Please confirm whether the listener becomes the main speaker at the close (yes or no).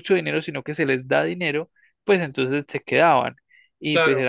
no